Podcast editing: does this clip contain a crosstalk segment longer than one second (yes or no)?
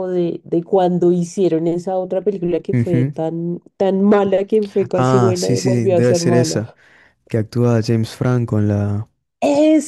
yes